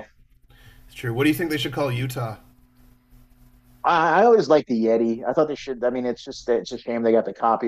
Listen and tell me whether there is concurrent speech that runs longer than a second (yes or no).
no